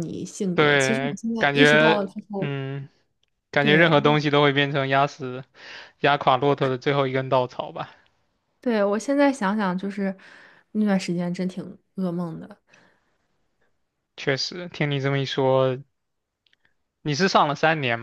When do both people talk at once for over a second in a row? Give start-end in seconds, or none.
0.5-2.5